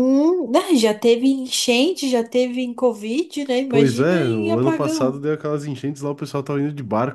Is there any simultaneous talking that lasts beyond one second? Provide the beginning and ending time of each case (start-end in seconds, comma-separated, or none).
3.7-5.2